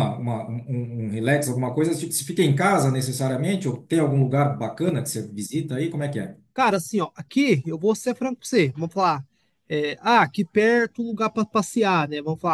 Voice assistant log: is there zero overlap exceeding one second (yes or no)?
yes